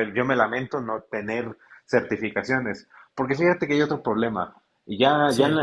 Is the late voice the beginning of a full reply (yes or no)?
no